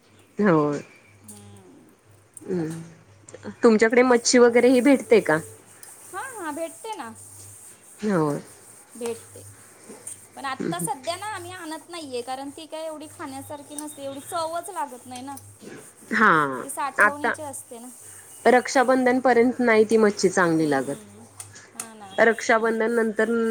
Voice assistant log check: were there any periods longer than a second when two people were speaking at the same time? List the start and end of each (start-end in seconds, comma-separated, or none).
none